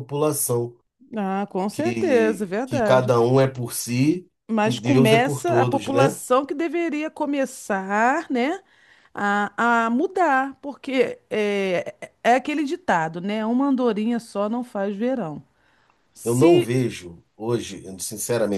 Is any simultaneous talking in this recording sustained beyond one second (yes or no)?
yes